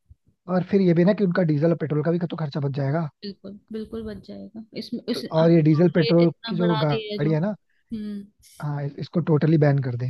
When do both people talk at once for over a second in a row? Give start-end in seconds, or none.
5.1-7.3